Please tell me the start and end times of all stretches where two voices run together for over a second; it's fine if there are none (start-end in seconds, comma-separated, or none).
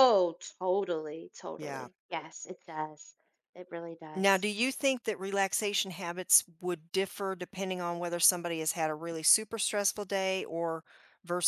none